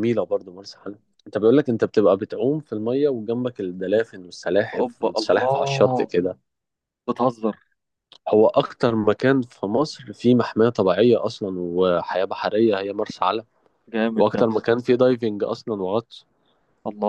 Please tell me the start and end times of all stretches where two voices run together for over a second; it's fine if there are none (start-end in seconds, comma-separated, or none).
4.7-6.1